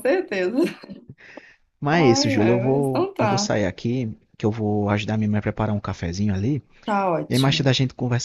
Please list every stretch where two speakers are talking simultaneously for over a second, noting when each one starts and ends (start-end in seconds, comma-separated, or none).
1.9-3.5